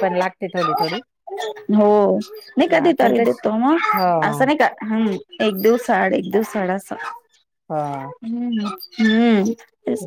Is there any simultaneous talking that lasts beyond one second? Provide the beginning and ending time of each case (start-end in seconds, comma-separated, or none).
none